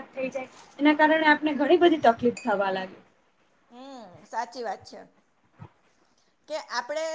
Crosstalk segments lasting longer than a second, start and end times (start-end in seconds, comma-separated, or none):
none